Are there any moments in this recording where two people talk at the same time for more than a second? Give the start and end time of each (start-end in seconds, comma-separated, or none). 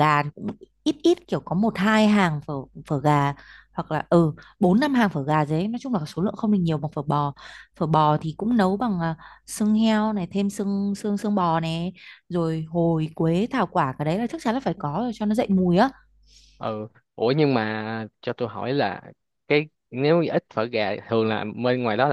none